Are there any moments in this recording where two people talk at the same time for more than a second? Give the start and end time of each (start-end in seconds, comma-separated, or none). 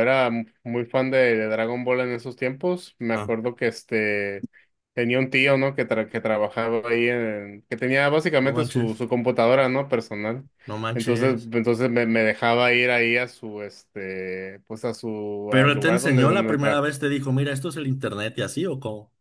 15.5-16.9